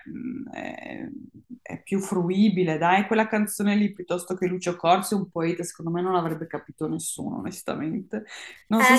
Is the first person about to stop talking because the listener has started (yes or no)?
yes